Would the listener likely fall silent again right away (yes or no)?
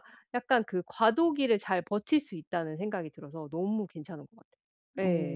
no